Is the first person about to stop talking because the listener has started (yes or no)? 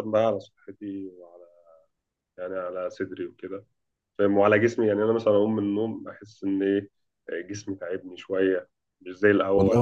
yes